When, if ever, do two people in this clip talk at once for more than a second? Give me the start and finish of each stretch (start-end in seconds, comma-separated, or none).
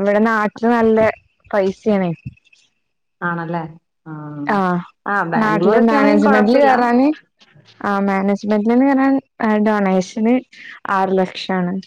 5.4-6.7